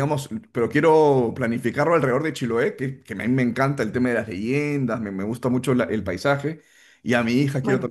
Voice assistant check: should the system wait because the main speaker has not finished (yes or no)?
yes